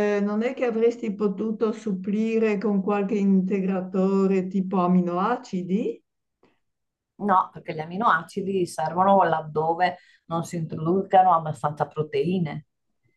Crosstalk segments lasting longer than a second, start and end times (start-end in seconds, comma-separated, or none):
none